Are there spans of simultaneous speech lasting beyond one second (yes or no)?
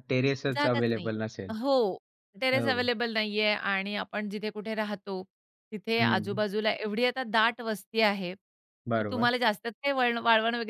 no